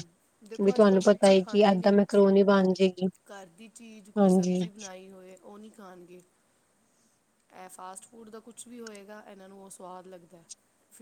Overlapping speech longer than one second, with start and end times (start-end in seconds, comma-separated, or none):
0.5-2.2